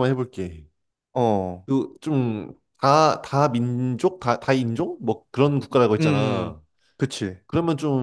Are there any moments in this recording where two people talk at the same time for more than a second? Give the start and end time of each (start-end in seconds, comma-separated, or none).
none